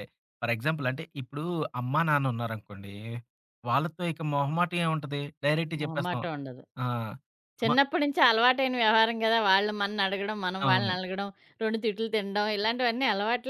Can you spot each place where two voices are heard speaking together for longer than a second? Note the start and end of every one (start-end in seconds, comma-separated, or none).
none